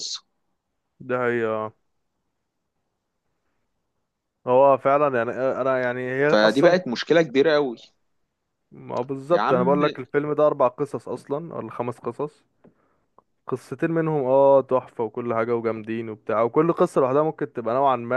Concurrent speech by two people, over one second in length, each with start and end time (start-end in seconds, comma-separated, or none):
none